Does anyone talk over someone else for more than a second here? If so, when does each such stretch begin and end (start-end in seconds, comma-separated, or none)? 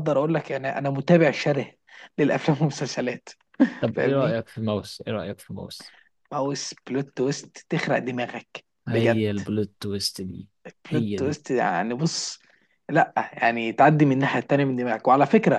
none